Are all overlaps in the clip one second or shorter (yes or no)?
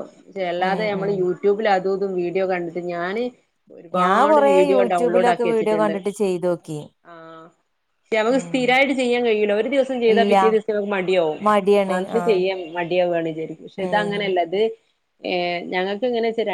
no